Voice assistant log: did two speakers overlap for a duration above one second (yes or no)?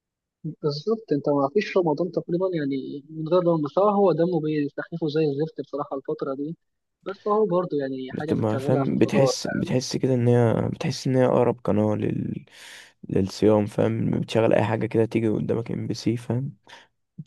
yes